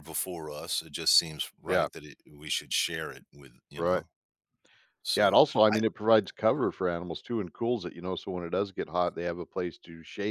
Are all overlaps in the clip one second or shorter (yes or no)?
yes